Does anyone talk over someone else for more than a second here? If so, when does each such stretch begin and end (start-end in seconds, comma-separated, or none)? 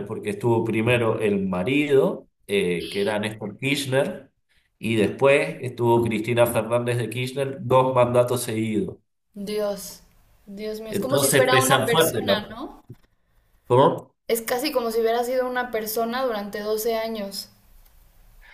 10.9-12.6